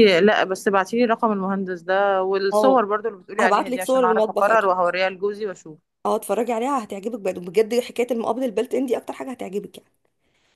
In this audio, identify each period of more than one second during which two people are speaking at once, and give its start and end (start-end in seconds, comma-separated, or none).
3.4-4.8